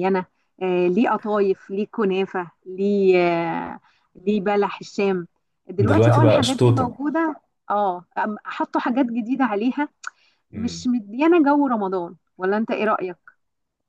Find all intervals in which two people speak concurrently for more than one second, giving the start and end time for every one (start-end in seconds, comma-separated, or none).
5.8-7.0